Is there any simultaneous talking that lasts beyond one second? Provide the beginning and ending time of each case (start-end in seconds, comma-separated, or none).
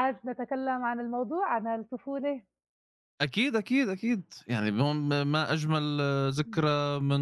none